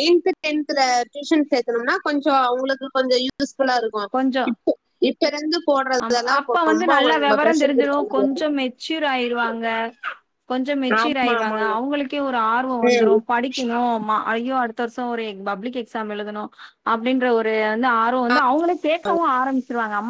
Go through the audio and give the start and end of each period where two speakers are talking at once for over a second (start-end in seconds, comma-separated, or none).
6.0-8.4